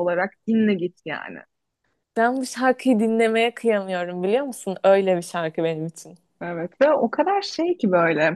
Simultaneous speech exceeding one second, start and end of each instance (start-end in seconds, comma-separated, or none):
none